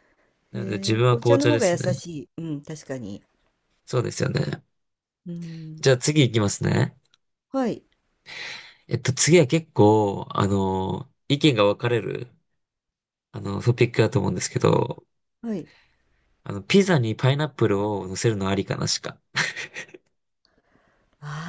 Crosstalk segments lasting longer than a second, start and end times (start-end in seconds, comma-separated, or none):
0.5-1.9